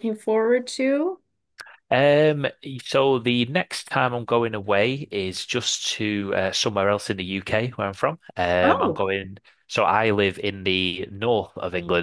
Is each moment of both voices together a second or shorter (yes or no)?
yes